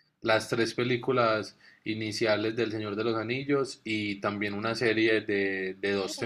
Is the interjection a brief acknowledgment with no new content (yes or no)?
yes